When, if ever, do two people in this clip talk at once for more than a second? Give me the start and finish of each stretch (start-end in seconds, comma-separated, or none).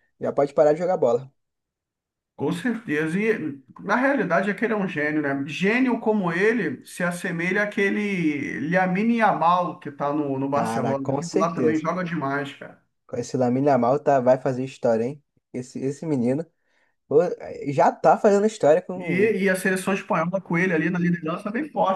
10.5-11.9